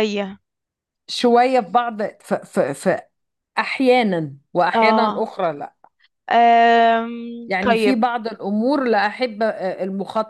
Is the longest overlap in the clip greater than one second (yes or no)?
no